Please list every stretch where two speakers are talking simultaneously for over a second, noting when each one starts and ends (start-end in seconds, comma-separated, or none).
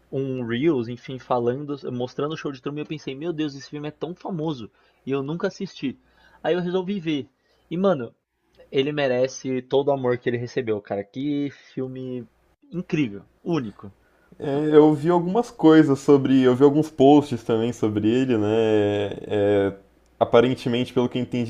none